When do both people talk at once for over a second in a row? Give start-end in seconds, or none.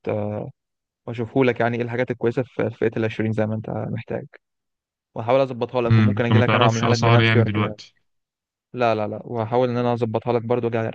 5.9-7.8